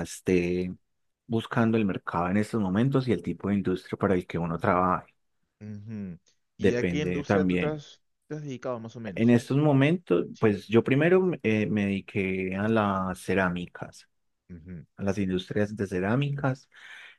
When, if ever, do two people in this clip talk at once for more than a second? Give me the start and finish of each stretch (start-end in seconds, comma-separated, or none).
6.6-7.8